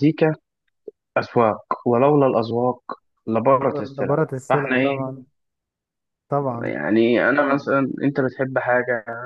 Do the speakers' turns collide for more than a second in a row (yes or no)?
yes